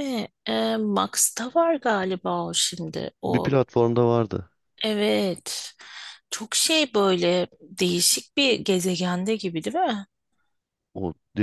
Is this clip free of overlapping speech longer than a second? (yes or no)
yes